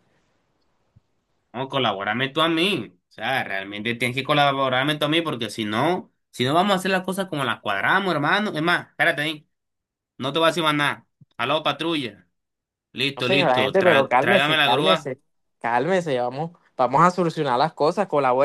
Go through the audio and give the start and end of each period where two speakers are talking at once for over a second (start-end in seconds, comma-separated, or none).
13.2-15.1